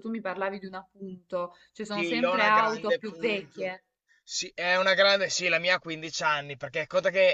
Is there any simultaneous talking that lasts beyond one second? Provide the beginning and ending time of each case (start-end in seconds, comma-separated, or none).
1.9-3.8